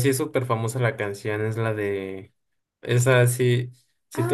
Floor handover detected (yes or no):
yes